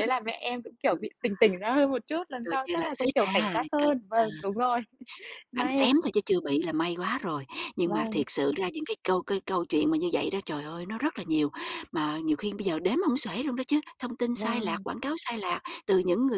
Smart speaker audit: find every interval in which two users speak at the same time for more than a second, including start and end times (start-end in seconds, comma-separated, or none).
2.4-4.3